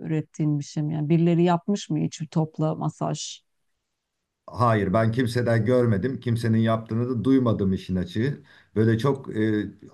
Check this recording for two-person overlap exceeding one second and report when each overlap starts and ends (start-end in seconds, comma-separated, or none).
none